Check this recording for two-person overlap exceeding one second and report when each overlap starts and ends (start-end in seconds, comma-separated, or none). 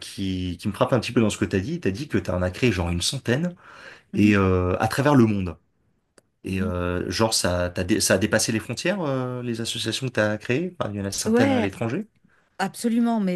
none